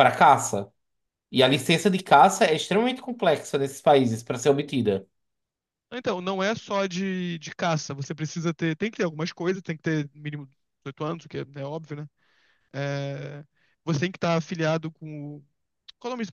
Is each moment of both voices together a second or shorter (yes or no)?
yes